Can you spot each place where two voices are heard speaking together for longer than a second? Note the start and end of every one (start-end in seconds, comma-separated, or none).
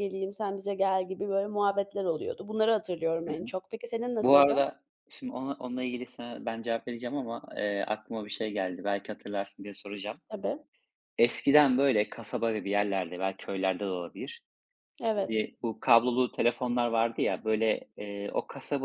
none